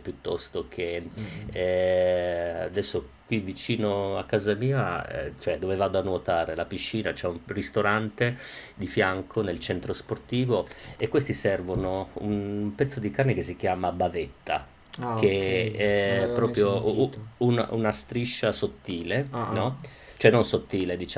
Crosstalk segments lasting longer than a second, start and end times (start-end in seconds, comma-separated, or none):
15.2-17.2